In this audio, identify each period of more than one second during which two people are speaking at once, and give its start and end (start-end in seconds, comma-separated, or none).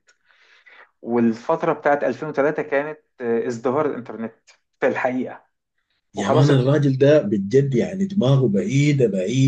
none